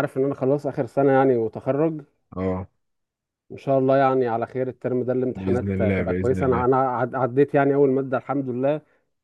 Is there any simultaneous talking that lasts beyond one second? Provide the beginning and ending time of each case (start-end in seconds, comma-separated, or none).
5.3-6.7